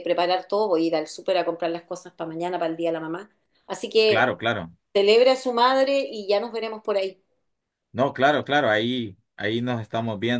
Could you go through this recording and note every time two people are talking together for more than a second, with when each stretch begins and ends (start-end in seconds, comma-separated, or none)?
none